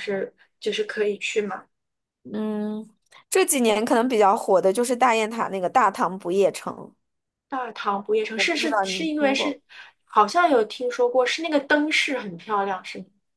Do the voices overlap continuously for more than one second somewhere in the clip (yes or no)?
yes